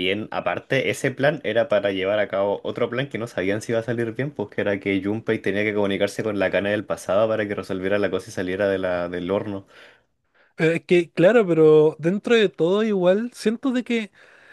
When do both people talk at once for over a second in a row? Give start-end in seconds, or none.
none